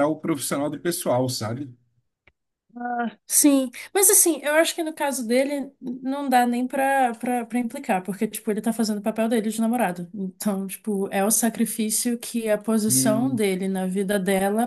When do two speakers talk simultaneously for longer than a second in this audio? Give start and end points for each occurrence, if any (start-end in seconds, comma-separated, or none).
none